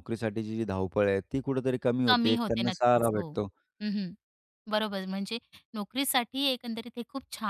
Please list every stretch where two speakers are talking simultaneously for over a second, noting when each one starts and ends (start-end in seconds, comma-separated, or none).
2.1-3.3